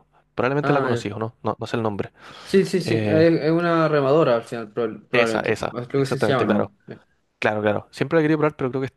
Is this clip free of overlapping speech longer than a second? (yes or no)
no